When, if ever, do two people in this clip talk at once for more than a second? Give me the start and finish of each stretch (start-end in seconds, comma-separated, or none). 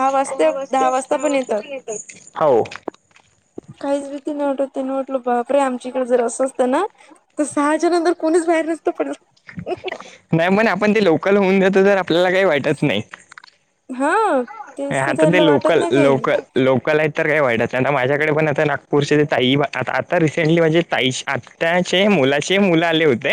14.9-16.2